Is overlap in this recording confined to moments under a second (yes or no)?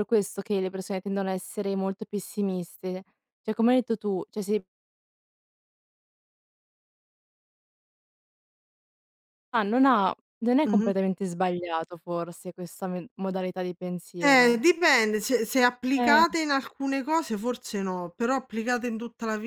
yes